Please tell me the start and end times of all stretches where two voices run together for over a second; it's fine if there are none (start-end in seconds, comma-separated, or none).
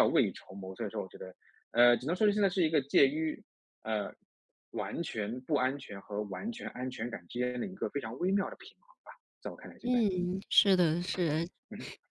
none